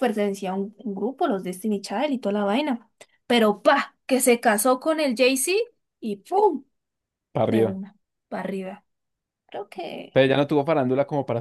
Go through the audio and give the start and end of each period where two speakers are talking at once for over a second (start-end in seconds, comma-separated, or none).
none